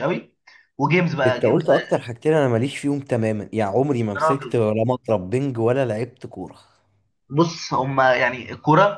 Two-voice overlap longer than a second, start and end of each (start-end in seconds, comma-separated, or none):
none